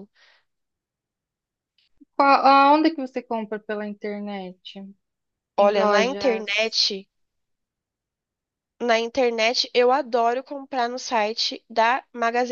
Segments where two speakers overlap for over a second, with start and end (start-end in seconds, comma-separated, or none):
5.6-6.8